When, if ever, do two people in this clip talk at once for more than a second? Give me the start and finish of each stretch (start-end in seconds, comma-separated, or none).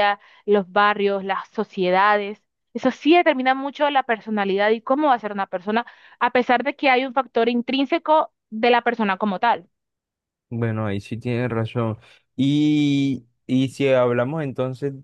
none